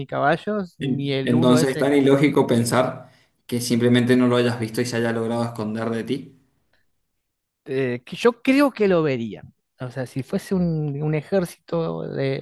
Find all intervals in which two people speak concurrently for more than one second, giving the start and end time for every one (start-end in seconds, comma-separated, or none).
0.8-2.3